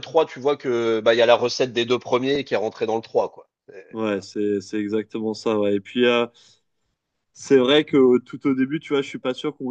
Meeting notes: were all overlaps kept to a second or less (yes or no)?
yes